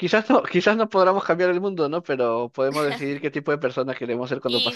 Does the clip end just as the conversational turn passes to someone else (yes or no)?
yes